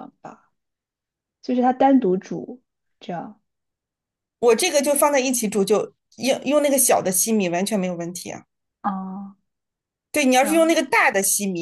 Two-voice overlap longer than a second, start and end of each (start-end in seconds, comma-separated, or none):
none